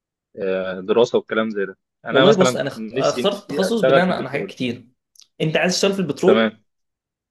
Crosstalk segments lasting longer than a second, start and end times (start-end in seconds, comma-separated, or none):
2.1-4.5